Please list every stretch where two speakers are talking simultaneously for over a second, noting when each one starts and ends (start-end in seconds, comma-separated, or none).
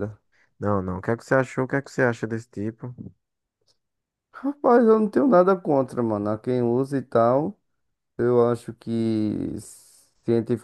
none